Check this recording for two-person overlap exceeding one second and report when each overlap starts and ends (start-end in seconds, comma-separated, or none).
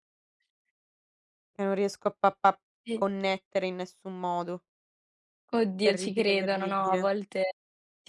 5.8-7.1